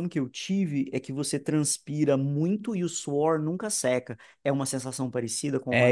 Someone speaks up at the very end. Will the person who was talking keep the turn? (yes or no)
no